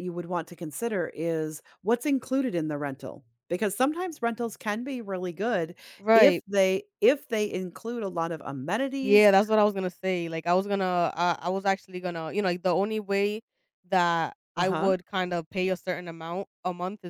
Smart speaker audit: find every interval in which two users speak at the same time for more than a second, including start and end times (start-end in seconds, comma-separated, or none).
none